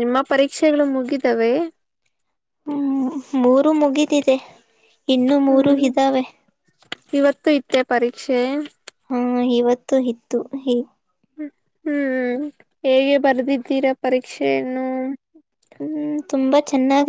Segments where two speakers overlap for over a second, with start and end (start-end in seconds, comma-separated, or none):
none